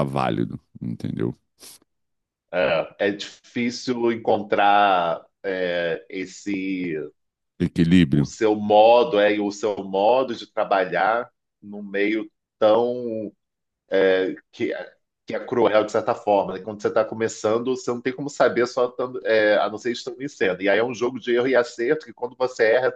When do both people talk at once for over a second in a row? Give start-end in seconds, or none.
none